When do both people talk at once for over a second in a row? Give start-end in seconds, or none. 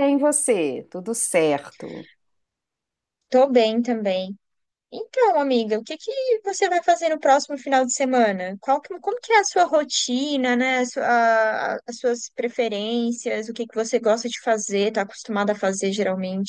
none